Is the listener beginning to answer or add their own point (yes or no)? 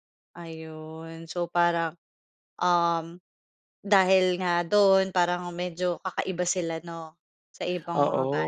yes